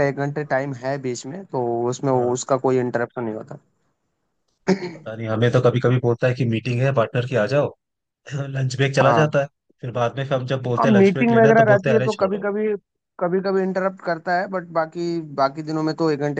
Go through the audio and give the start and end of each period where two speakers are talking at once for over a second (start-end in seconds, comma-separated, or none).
10.8-12.4